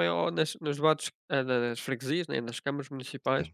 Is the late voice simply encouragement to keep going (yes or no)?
yes